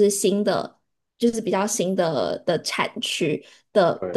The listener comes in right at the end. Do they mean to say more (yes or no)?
no